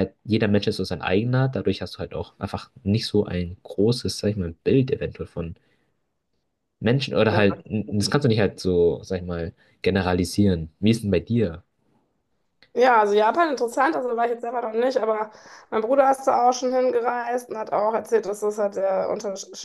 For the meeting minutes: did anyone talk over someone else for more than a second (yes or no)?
no